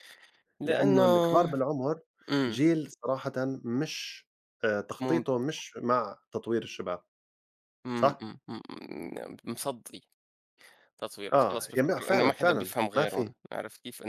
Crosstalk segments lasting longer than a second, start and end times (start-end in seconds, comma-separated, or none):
11.3-13.3